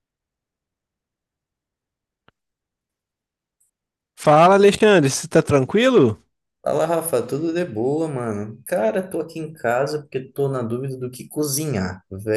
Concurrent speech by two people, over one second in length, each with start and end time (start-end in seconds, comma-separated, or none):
none